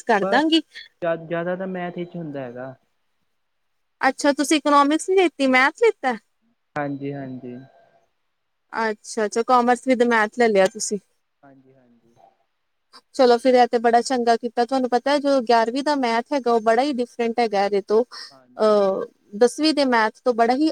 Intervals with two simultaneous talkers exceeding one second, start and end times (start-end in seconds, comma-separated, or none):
none